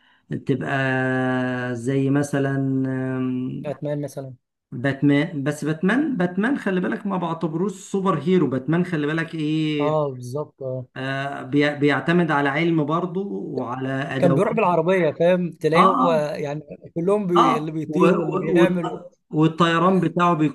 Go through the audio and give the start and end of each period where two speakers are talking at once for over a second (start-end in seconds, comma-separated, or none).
17.4-19.0